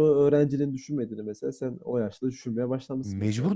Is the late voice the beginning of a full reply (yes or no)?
yes